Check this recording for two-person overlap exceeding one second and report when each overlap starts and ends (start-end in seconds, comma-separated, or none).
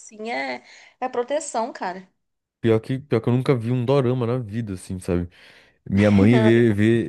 none